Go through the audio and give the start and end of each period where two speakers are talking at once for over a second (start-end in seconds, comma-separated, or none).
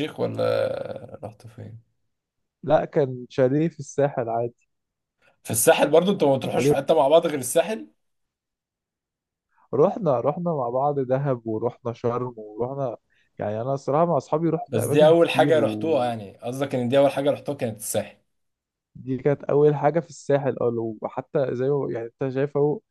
14.7-16.1